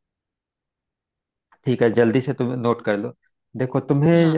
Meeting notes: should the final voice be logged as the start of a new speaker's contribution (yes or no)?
no